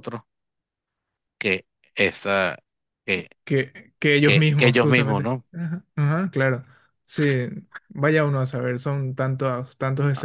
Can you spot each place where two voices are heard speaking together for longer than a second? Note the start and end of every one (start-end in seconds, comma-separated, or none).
4.2-5.4